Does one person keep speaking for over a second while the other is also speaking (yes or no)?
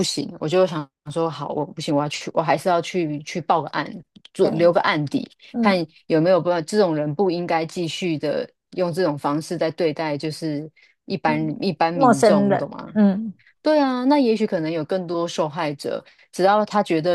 yes